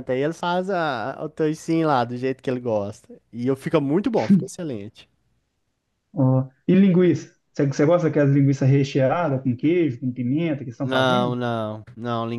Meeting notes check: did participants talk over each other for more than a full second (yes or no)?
no